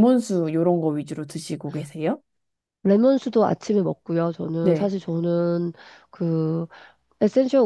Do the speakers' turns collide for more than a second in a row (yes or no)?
no